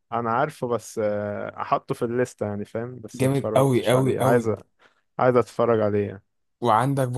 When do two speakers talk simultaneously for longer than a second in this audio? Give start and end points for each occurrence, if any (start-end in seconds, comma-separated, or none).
3.2-4.5